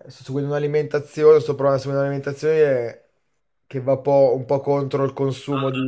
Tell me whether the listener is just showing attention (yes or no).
no